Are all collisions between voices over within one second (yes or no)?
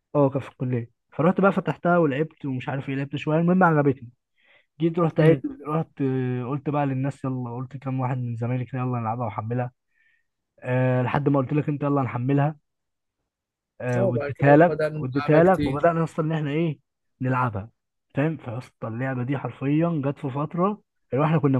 no